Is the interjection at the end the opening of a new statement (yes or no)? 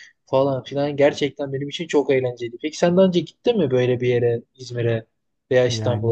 no